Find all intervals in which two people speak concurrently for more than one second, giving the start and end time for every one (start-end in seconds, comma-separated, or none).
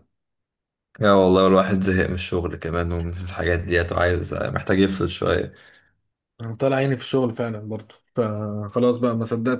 none